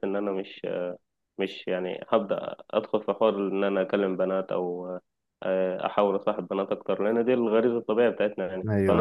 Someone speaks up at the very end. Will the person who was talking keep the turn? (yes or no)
yes